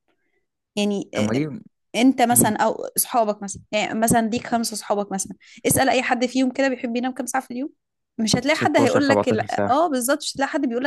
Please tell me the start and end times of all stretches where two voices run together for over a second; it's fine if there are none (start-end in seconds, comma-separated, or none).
8.6-9.8